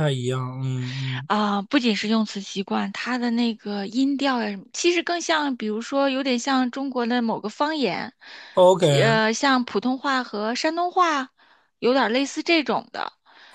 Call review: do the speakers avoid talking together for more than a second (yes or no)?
yes